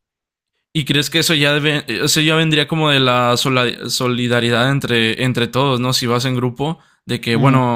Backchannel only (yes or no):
yes